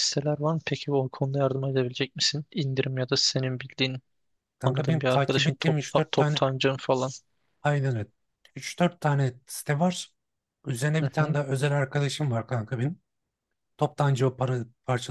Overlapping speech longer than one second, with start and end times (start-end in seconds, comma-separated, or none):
4.6-6.4